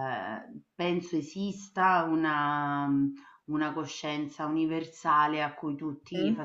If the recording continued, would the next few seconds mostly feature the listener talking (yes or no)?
no